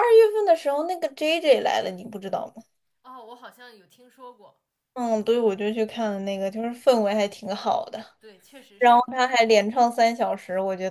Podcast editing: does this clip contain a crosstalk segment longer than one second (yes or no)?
no